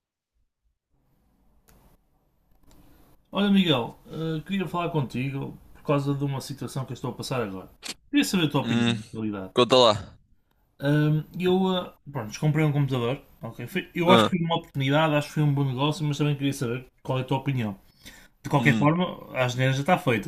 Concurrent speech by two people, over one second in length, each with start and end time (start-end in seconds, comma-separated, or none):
none